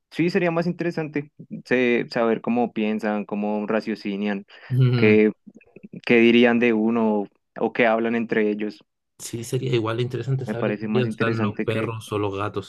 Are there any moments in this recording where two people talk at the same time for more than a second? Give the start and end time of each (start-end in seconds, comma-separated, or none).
10.4-11.9